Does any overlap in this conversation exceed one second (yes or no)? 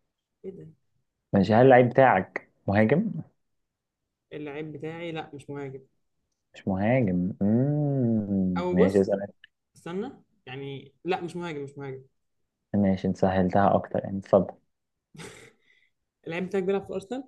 no